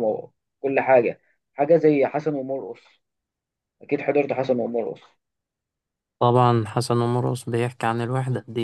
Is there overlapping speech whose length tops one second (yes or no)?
no